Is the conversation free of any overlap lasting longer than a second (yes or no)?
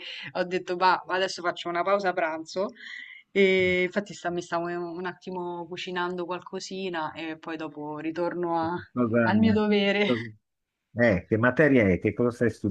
yes